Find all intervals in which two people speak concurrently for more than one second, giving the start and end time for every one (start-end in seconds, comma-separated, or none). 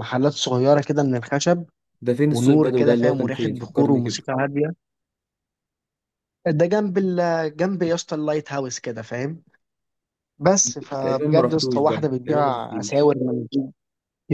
2.3-4.3, 11.0-13.2